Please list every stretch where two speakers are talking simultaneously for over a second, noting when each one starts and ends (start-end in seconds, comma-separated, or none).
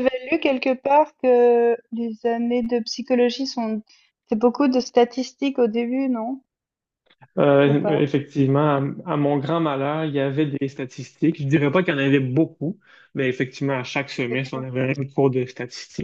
none